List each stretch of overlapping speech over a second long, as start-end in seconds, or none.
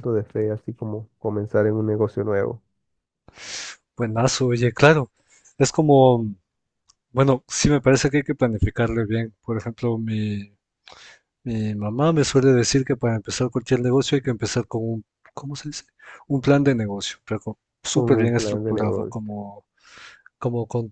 17.9-19.3